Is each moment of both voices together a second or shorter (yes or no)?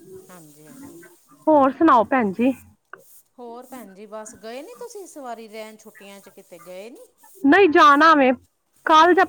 yes